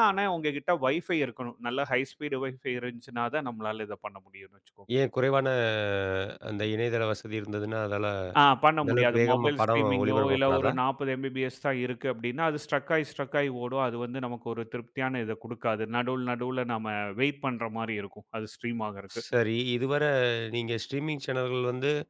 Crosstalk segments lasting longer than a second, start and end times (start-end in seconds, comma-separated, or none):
8.8-10.7